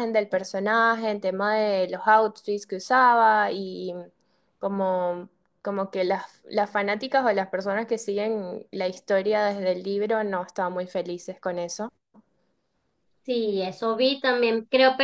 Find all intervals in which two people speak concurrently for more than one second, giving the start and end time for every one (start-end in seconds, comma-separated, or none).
none